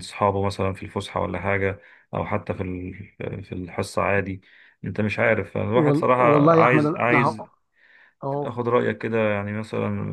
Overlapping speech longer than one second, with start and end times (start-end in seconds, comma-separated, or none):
5.7-7.4